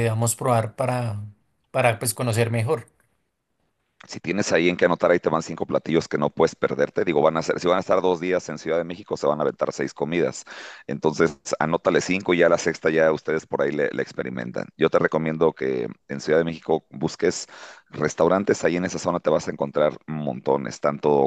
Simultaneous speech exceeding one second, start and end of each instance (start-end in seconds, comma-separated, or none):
none